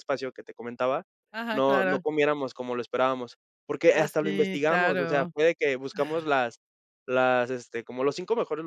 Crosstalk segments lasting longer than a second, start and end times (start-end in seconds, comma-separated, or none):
3.9-5.3